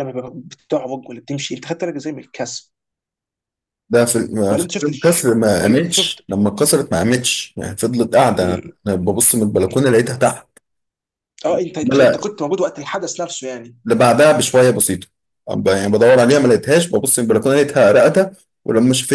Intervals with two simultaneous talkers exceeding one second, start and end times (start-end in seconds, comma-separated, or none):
4.5-6.2